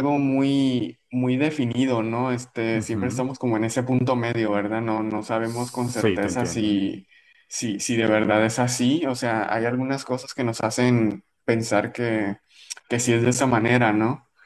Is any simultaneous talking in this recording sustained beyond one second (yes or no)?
yes